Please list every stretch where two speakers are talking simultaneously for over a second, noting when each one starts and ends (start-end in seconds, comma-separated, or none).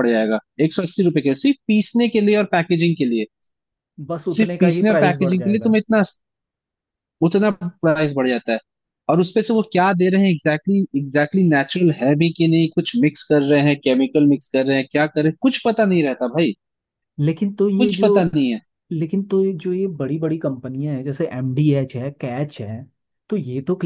4.3-5.8